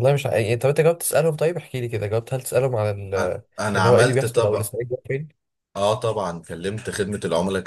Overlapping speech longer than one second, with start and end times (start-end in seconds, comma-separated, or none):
3.2-4.7